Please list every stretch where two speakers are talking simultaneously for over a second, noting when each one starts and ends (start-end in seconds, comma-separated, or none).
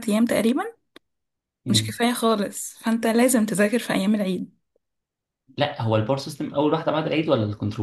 none